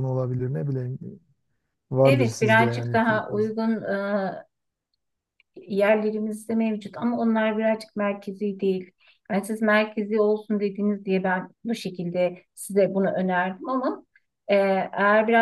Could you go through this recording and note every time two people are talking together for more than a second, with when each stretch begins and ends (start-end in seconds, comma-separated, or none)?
2.0-3.5